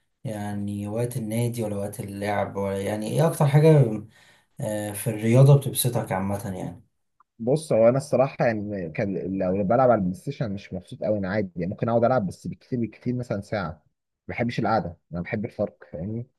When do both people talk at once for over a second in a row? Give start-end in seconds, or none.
none